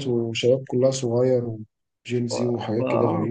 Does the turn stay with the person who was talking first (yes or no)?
no